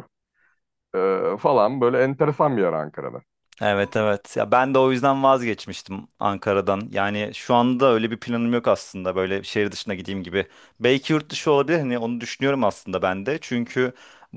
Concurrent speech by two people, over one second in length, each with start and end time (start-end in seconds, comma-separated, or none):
none